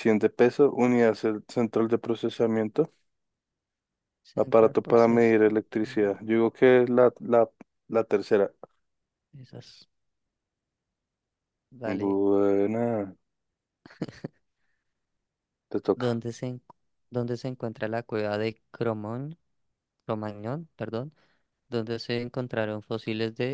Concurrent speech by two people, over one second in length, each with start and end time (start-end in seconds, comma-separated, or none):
4.3-6.1